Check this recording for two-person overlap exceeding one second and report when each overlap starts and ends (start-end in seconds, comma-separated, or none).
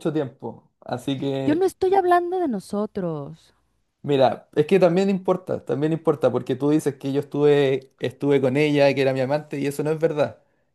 none